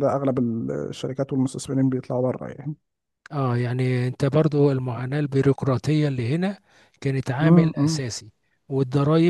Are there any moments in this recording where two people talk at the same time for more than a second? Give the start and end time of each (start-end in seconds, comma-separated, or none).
none